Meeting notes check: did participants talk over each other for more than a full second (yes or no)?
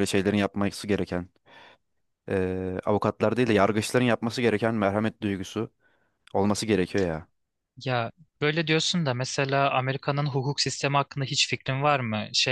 no